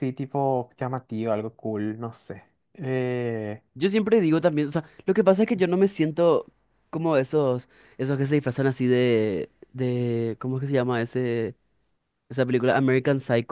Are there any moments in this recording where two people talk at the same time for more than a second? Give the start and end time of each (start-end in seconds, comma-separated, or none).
none